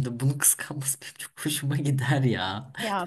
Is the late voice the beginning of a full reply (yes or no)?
yes